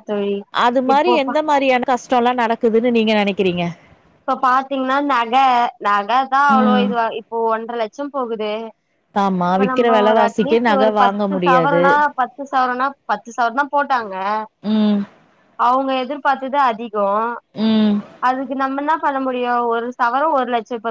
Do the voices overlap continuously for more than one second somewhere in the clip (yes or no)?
yes